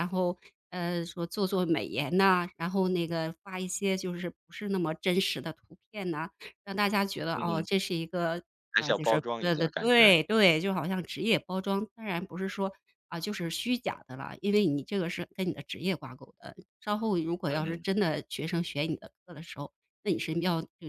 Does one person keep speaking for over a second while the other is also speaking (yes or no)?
yes